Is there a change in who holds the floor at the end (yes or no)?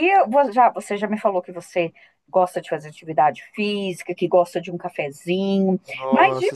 no